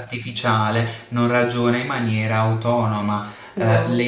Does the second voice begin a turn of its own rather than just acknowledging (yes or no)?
no